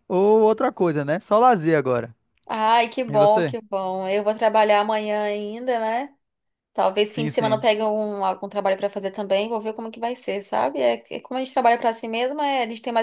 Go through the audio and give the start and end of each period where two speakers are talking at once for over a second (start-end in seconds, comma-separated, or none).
none